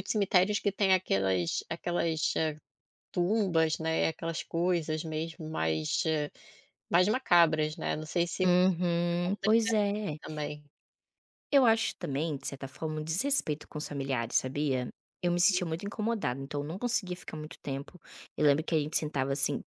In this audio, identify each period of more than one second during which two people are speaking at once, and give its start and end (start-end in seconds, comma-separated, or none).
8.4-9.8